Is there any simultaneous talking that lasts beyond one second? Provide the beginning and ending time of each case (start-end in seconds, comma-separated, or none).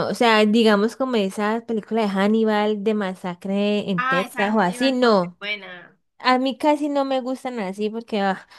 4.0-5.4